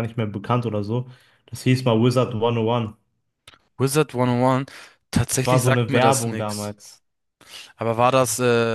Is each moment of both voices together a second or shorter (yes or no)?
no